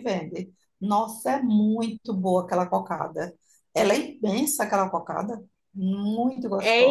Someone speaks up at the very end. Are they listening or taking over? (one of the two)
taking over